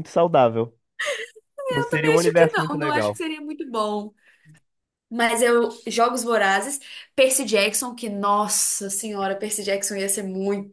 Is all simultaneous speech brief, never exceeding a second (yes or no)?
no